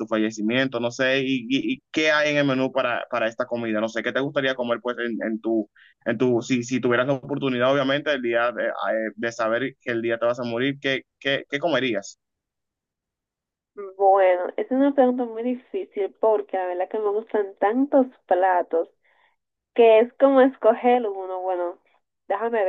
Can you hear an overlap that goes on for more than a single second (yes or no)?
no